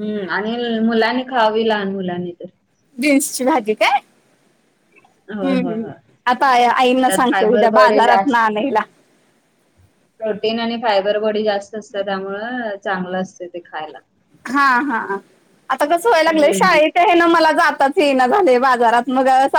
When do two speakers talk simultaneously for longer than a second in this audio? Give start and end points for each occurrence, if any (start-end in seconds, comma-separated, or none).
7.0-8.4